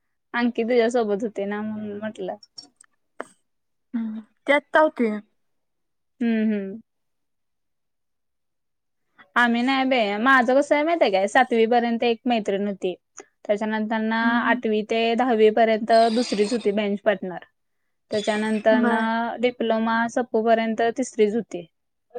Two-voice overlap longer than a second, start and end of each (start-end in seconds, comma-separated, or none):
none